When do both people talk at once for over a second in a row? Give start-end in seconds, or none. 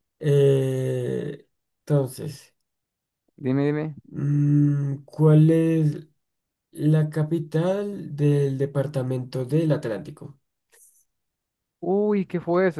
none